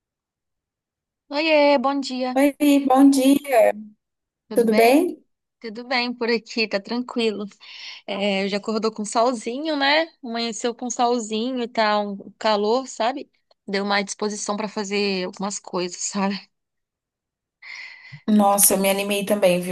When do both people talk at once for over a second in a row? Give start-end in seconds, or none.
none